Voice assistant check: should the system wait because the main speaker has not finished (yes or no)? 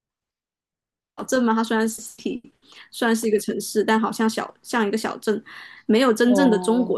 yes